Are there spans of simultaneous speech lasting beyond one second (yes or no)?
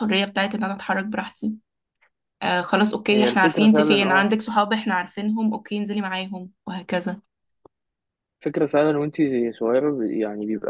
yes